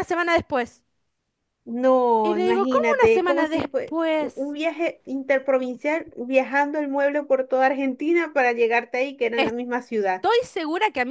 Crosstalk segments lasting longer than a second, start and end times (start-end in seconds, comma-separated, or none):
2.2-4.5